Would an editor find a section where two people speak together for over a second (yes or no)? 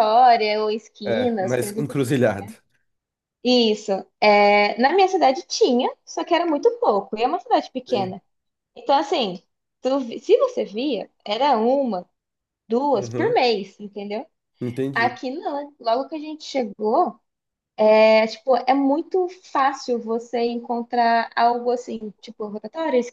yes